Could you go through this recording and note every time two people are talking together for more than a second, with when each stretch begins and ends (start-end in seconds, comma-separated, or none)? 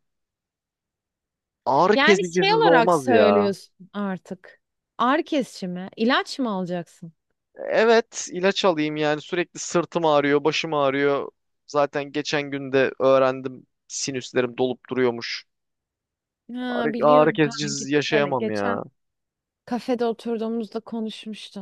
1.9-3.5, 16.7-18.8